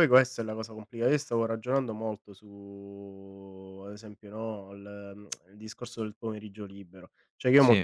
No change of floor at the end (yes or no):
yes